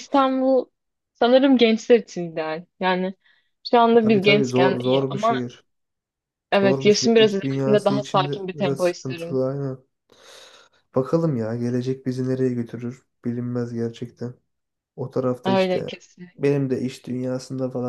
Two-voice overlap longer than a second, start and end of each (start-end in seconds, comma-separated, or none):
4.0-5.5, 6.6-9.4